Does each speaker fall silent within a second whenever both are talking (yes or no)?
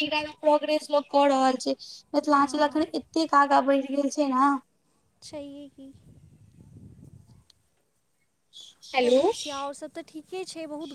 yes